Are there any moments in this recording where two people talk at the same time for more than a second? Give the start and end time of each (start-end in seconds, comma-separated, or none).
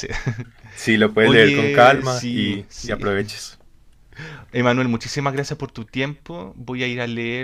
1.2-3.0